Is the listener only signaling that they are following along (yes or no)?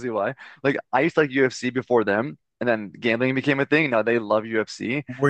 no